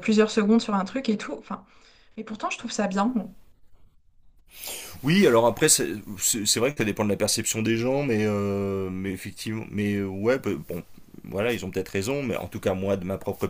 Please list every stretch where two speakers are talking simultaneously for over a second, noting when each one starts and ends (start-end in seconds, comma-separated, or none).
none